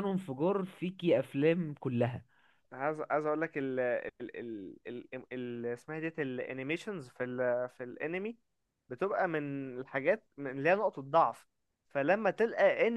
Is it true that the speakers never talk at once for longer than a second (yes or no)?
yes